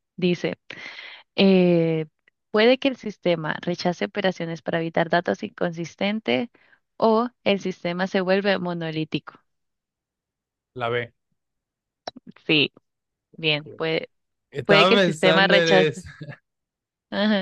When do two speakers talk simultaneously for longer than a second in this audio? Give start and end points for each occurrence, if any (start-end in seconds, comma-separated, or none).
14.7-16.1